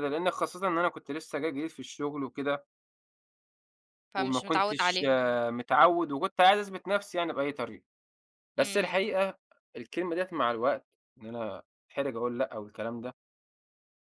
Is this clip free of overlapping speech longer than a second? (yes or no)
no